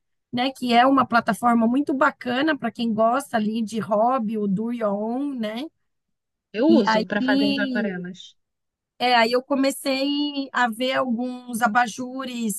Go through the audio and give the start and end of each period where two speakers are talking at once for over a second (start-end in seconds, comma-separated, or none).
6.7-8.1